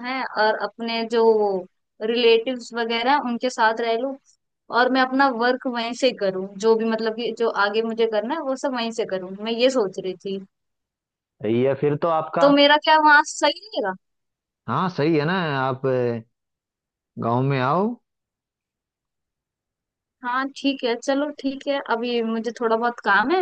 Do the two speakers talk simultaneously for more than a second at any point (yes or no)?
no